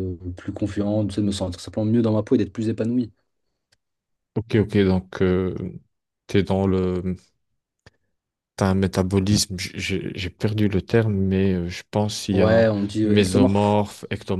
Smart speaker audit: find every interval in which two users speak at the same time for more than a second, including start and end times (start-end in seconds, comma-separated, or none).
12.3-13.8